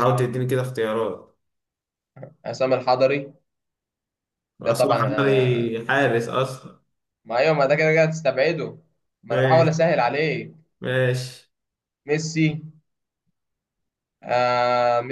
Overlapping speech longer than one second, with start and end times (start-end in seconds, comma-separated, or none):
4.6-5.8